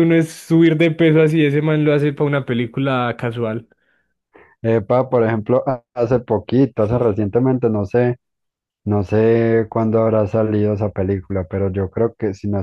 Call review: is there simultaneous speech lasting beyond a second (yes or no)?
no